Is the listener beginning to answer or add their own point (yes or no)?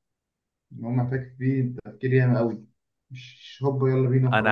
yes